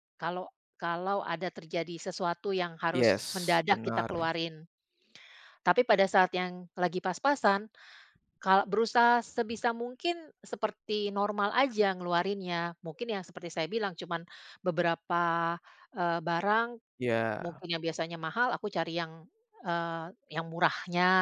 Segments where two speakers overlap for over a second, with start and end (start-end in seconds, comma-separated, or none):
2.9-4.3